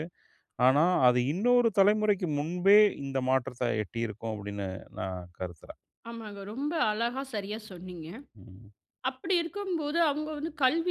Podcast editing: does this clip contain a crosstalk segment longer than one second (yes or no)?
no